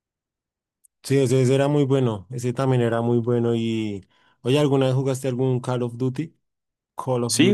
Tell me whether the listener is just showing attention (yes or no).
no